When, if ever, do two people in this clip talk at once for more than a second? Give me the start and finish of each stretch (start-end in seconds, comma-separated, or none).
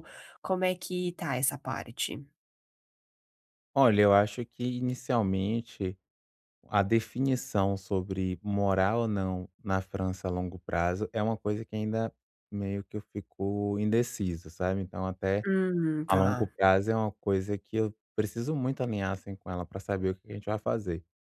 none